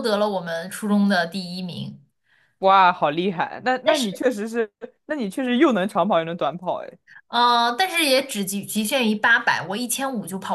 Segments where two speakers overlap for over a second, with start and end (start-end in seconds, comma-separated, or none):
none